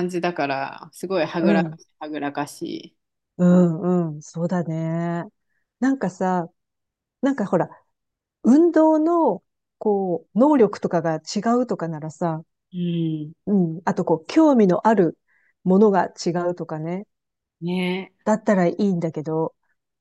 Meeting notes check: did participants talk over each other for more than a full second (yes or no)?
no